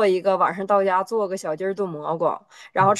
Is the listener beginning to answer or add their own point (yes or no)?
no